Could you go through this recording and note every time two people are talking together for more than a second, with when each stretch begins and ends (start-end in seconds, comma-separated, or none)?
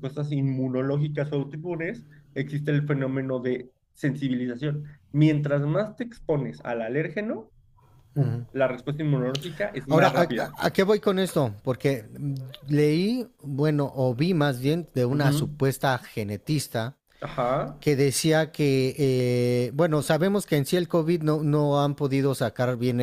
none